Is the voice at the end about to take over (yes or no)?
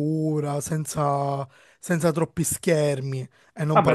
yes